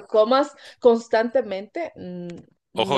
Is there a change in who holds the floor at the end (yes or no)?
yes